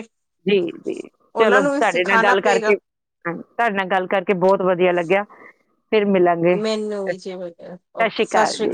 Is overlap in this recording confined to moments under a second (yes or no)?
no